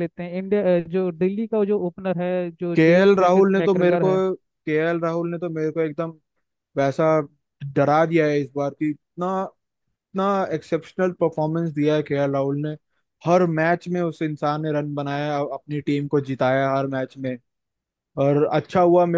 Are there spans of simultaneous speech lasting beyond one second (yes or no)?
yes